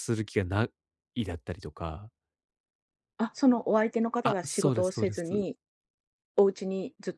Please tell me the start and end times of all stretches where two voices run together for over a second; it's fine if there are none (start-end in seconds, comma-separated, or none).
4.2-5.5